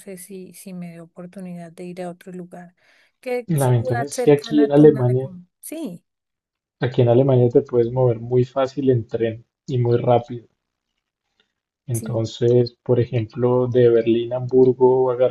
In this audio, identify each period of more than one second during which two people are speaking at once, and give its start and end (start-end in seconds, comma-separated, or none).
3.5-5.3